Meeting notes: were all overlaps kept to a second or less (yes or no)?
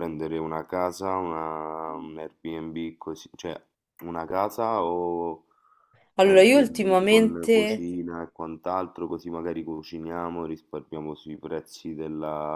no